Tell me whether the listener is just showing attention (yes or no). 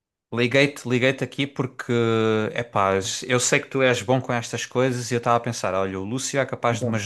yes